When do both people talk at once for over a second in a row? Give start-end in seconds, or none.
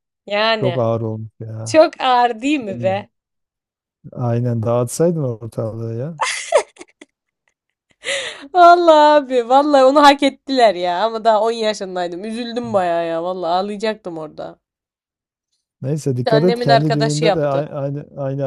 16.1-17.6